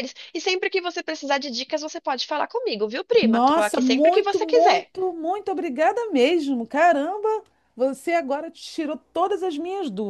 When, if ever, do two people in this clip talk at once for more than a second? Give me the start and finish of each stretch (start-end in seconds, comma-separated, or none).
3.2-4.9